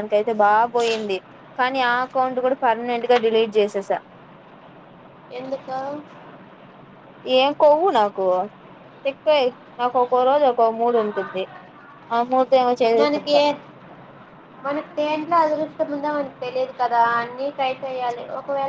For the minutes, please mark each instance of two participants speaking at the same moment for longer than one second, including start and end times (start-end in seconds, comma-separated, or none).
none